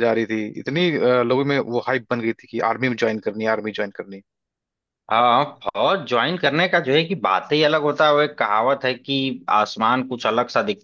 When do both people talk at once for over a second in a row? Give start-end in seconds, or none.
none